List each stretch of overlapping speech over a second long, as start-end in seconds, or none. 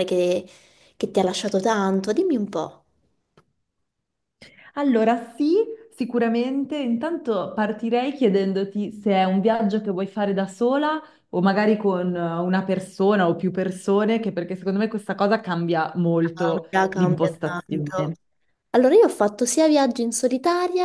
16.7-18.1